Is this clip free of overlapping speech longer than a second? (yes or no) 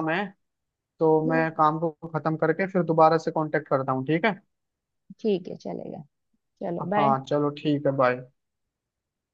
yes